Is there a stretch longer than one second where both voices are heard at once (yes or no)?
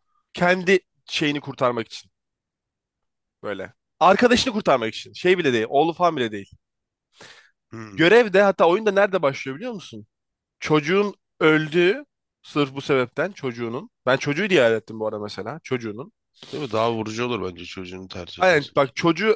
no